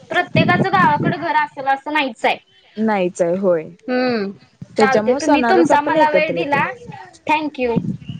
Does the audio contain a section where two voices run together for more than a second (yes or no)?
yes